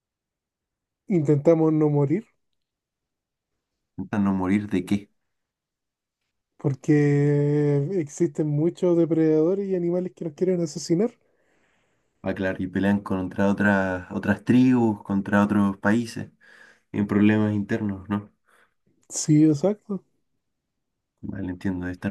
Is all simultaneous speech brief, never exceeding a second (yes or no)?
yes